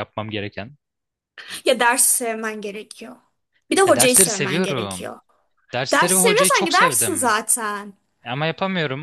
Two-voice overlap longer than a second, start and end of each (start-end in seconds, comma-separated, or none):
3.9-5.1, 5.9-7.3